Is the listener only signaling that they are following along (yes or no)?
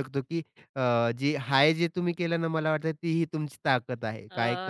yes